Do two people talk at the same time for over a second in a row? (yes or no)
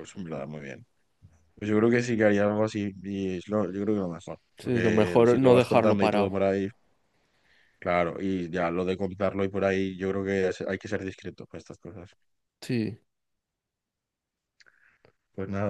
yes